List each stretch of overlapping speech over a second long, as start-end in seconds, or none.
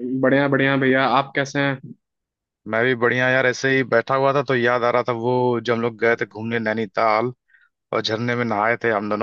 none